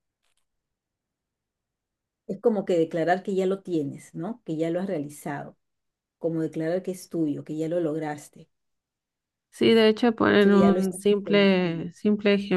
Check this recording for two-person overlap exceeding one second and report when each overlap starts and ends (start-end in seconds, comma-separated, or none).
10.4-11.9